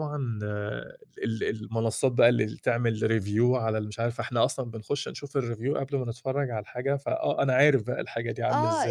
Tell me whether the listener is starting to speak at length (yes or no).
yes